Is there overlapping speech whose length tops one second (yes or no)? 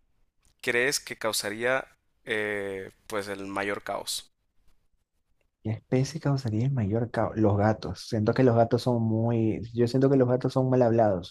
no